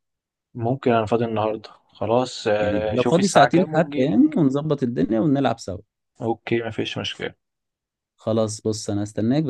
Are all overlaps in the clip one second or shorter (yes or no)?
no